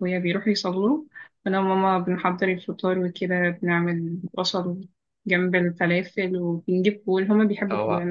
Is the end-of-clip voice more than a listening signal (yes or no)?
no